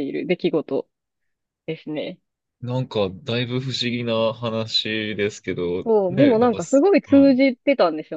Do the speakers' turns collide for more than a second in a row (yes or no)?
yes